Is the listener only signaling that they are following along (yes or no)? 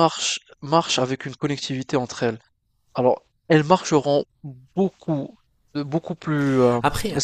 yes